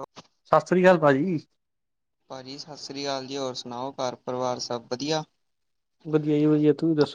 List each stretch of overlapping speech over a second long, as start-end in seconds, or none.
none